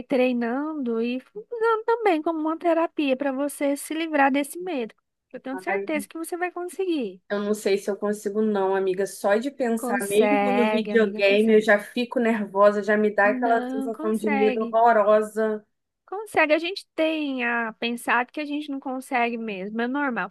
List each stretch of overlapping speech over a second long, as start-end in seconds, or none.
9.8-11.7, 13.2-14.8